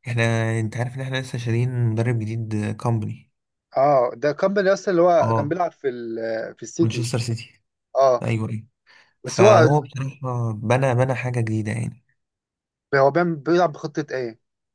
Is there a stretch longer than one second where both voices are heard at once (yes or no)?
no